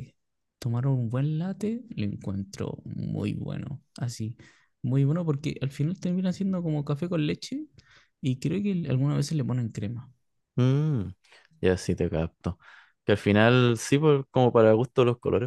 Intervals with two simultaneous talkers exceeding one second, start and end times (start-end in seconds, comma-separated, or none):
none